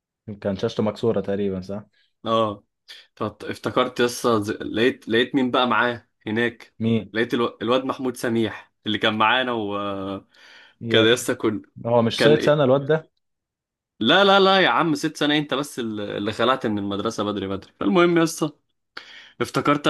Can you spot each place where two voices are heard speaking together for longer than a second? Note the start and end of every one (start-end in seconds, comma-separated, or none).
none